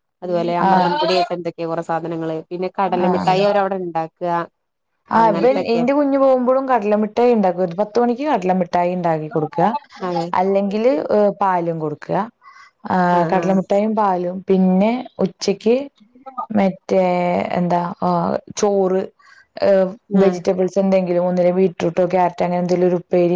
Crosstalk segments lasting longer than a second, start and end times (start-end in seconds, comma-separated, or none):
none